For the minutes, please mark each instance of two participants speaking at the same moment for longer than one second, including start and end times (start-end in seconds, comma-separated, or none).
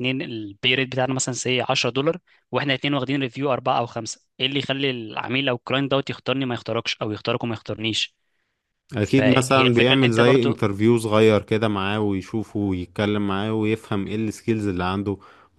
9.0-10.7